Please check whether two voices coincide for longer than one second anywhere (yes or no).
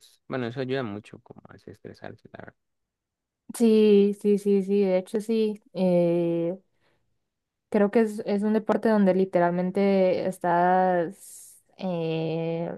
no